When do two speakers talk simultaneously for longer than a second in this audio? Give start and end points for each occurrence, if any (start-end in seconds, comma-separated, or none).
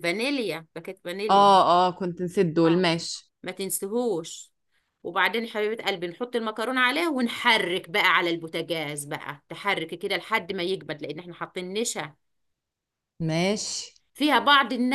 none